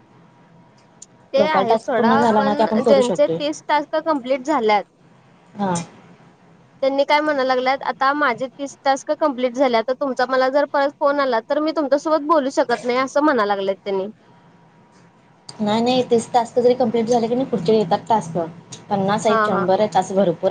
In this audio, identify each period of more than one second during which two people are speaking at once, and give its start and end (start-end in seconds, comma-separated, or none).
1.4-3.4